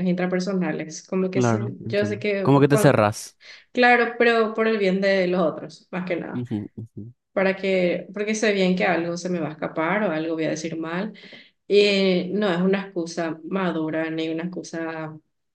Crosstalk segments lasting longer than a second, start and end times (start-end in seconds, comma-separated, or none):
1.3-3.0